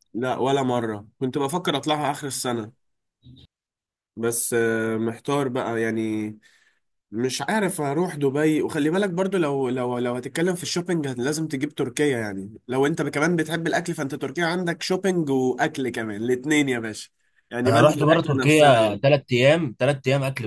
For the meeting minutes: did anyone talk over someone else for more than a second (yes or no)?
yes